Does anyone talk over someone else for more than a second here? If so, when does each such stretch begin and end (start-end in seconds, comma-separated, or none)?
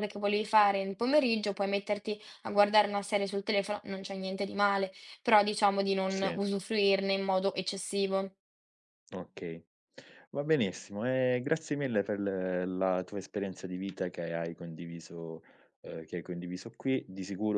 none